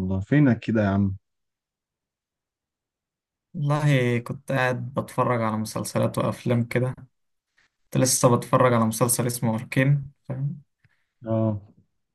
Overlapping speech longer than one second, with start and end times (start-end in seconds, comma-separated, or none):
none